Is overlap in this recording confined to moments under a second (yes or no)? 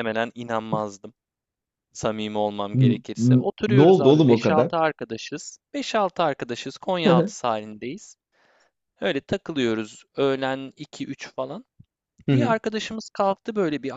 no